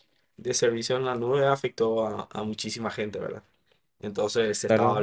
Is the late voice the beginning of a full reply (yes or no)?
yes